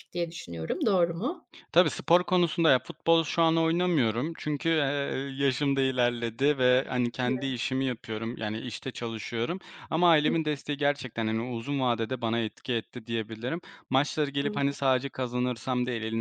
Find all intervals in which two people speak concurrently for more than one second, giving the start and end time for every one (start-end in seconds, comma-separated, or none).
none